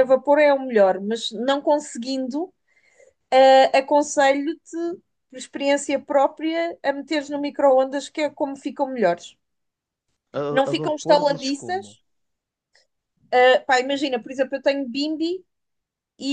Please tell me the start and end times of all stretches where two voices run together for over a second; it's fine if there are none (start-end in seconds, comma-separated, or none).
10.5-12.0